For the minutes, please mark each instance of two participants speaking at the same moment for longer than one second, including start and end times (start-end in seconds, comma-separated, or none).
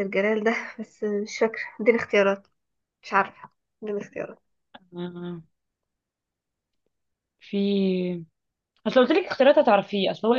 none